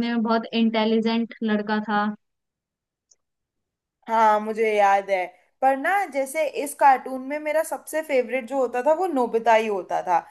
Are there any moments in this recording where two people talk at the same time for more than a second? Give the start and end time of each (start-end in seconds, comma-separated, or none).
none